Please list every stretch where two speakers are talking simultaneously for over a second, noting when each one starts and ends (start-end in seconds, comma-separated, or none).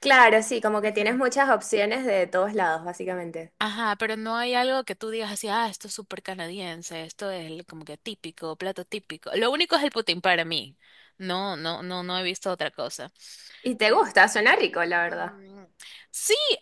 none